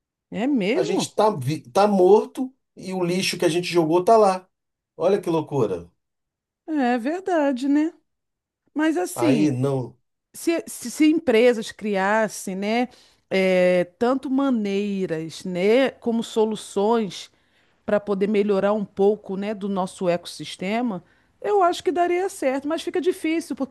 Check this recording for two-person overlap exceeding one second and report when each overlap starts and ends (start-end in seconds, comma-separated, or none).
none